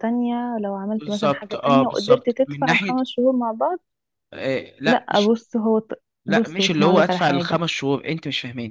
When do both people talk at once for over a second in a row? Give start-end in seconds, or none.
1.0-3.0, 6.2-7.6